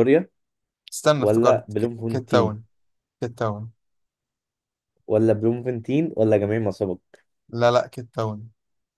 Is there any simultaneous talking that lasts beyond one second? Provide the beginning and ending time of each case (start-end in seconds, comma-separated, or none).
1.2-2.5